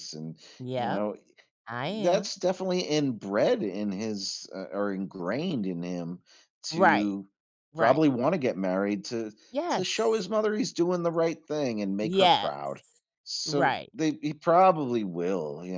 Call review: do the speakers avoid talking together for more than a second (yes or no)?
yes